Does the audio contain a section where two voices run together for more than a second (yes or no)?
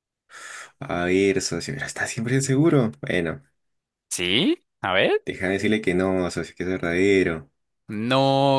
no